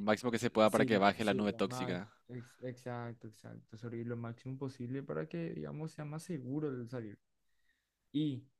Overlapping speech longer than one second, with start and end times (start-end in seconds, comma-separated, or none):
0.7-2.1